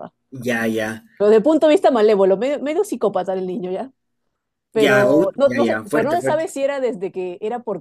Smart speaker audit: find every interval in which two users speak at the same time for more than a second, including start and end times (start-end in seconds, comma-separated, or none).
4.8-6.5